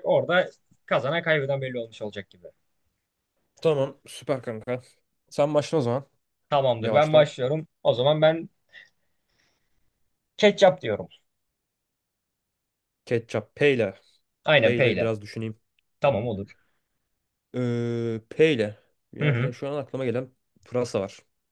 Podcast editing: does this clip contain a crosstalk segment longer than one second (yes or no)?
no